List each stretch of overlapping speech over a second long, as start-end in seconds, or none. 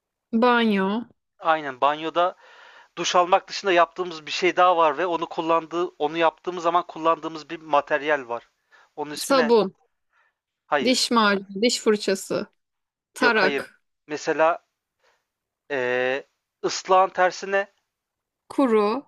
none